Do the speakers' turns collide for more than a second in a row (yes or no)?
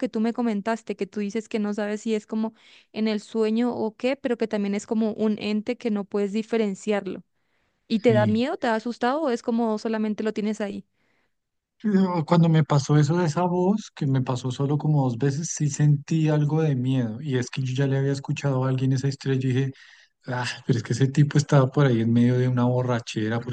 no